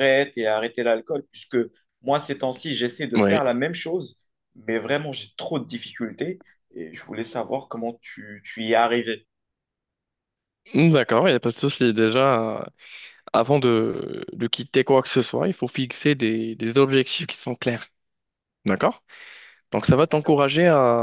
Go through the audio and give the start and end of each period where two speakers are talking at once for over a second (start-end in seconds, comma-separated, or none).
none